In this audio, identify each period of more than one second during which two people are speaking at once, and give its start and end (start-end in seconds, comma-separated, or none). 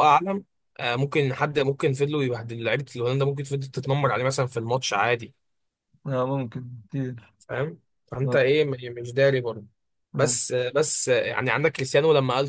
none